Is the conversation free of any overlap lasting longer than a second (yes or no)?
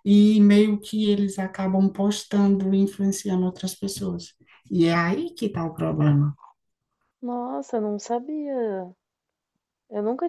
yes